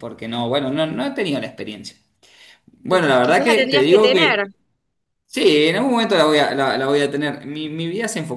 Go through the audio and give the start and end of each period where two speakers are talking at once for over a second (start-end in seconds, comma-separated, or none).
2.9-4.1